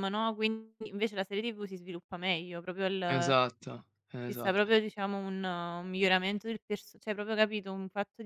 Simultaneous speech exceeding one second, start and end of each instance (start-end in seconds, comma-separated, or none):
none